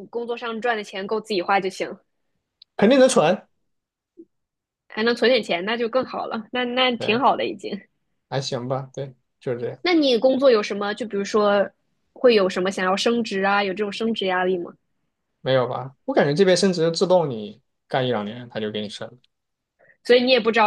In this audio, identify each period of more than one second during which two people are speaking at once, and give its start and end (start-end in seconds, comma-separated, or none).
none